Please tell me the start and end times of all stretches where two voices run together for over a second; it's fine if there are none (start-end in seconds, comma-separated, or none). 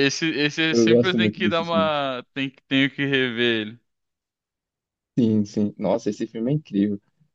0.7-1.9